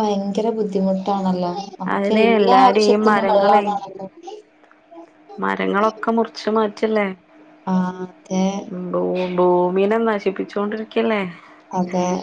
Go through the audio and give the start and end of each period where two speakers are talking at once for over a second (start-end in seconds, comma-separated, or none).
1.9-3.6